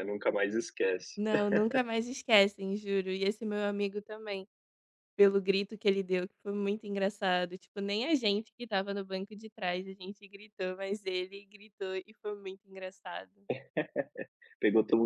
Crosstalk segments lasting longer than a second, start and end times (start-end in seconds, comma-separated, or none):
none